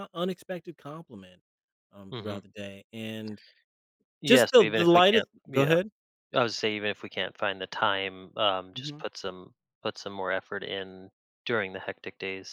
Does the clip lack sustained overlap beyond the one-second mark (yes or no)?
no